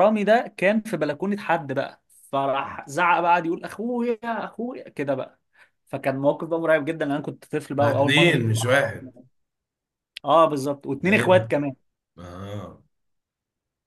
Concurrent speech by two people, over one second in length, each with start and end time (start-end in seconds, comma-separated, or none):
7.8-9.1